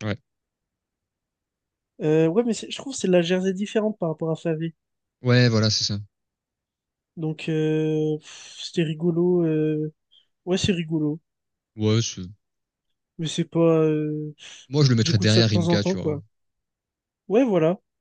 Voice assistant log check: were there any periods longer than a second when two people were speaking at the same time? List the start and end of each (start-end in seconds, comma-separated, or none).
14.7-16.2